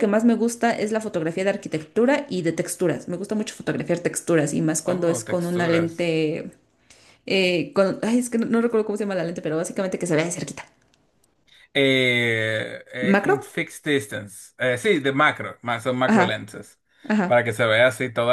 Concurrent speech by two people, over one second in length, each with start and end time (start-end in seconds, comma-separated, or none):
4.8-6.1